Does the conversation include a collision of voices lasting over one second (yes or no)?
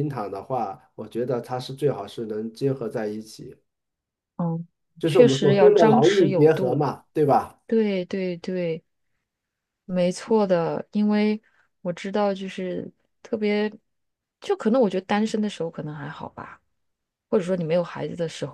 yes